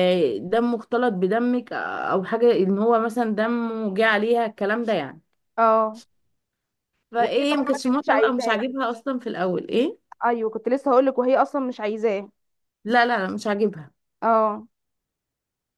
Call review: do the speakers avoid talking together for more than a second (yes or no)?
no